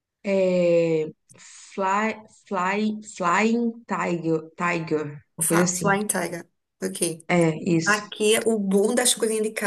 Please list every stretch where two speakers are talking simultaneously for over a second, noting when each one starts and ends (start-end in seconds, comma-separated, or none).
none